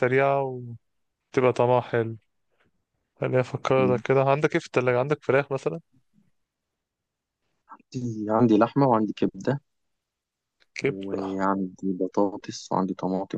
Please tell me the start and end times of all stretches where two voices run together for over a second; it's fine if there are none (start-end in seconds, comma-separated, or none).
none